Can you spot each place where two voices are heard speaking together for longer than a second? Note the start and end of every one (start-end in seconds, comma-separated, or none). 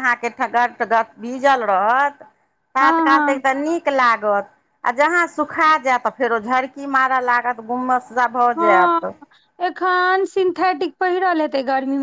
none